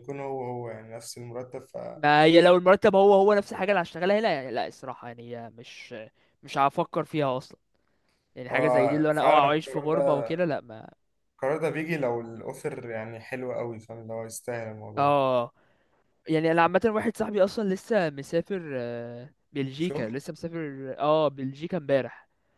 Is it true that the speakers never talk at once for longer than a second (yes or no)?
no